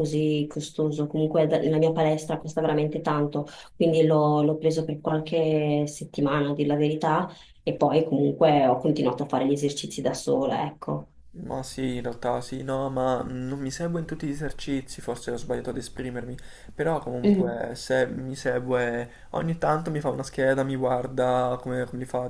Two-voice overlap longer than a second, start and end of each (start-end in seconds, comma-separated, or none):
none